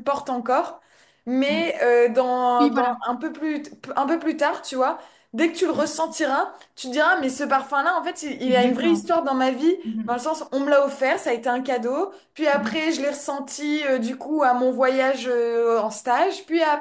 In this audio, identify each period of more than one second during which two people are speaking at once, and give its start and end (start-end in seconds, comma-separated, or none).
none